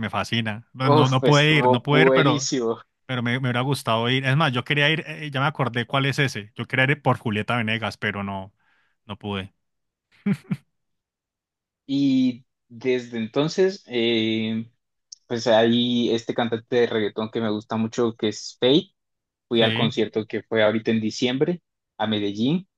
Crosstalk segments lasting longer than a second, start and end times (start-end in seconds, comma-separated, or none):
0.9-2.5